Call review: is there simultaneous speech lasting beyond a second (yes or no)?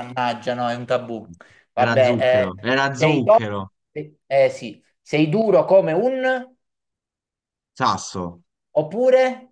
yes